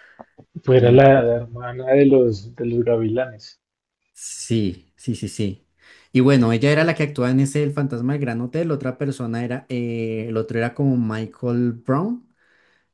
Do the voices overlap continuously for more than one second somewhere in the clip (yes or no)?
no